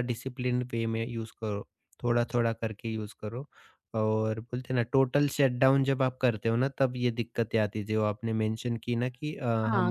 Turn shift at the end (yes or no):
yes